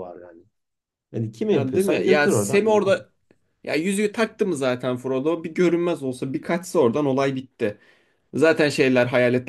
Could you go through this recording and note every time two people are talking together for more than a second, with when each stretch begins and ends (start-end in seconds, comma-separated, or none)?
1.5-3.0